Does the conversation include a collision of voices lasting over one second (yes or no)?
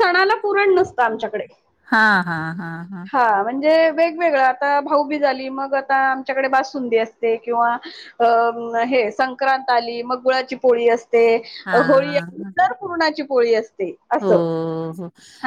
no